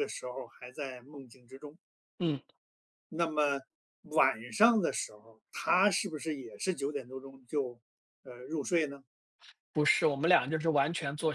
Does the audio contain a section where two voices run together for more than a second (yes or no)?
no